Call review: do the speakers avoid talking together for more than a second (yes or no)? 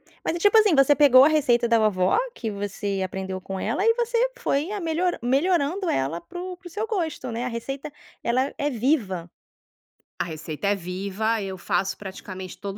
yes